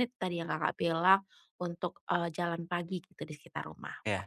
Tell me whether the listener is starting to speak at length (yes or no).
yes